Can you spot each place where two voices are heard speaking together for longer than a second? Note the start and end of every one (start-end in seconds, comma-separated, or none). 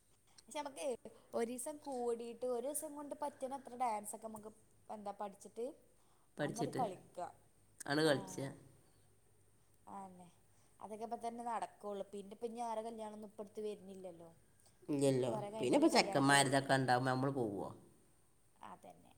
none